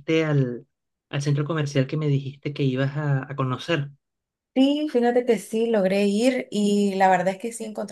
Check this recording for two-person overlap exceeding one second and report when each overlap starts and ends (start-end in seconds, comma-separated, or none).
none